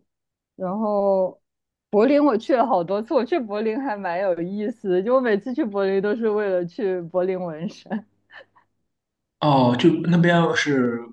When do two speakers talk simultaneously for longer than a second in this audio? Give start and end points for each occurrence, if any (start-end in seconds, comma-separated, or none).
none